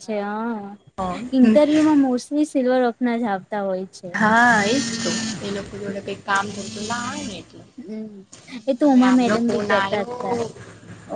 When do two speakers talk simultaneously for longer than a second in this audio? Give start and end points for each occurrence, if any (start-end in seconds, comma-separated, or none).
8.8-10.4